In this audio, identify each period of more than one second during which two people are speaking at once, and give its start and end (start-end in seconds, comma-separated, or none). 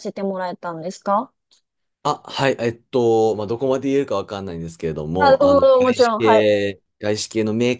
5.2-6.5